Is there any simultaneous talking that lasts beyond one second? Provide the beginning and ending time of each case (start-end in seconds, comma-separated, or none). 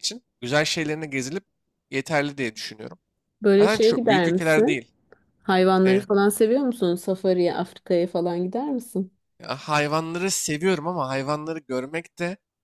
3.6-4.8